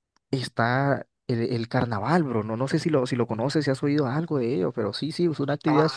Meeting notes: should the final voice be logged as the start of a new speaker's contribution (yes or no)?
yes